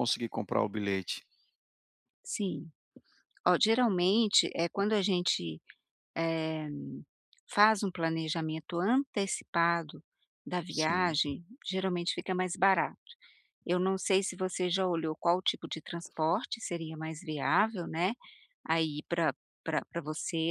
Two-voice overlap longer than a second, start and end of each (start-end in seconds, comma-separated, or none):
none